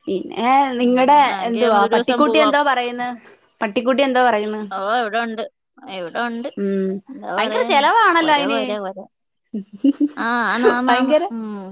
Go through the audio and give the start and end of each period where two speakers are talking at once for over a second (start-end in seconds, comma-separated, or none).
0.8-2.5